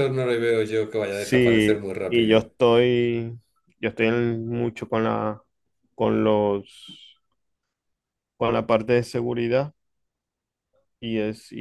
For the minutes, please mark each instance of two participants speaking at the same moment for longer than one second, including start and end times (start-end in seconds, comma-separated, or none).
1.1-2.5